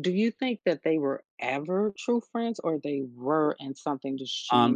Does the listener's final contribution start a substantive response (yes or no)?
yes